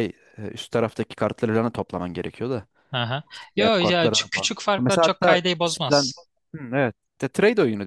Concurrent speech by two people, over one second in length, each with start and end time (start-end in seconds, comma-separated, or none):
3.3-6.1